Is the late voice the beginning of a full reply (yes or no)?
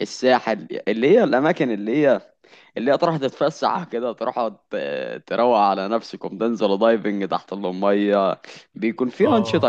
no